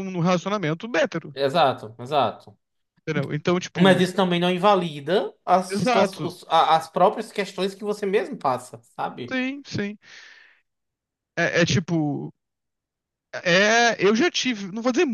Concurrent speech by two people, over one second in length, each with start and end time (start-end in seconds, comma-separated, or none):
none